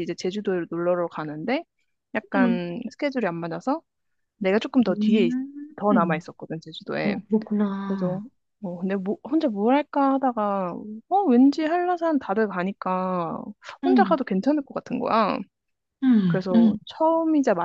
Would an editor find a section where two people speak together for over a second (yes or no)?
no